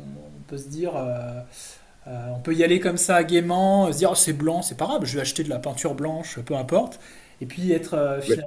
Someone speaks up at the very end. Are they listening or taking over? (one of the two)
listening